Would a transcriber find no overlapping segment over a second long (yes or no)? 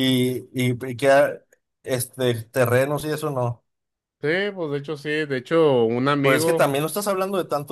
yes